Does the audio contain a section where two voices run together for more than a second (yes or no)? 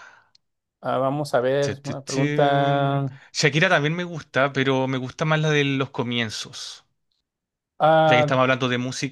yes